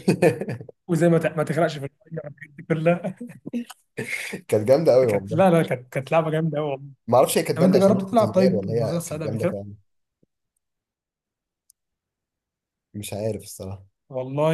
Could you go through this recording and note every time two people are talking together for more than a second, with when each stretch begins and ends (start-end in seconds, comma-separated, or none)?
7.5-9.6